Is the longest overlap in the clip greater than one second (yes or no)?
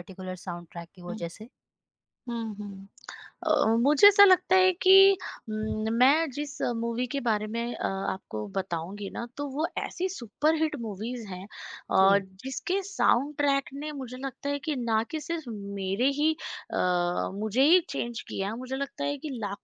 no